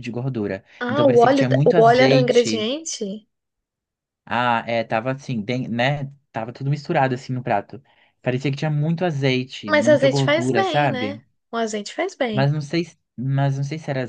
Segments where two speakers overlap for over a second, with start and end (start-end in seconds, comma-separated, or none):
0.8-2.7, 9.7-11.2